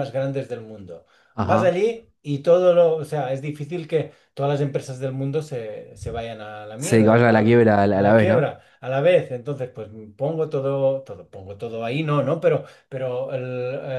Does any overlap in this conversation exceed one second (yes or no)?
yes